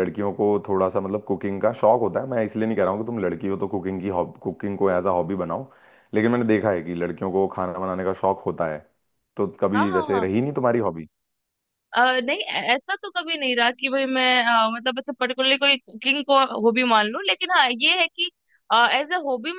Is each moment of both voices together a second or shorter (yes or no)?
yes